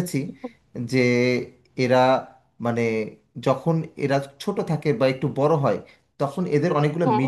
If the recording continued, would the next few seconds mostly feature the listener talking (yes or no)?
no